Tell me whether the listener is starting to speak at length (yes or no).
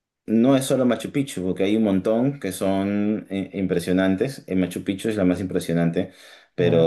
no